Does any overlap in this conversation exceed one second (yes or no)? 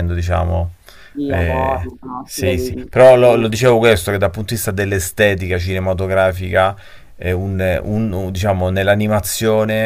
yes